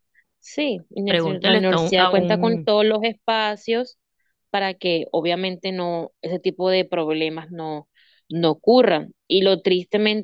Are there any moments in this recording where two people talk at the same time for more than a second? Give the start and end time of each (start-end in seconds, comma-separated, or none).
1.1-2.7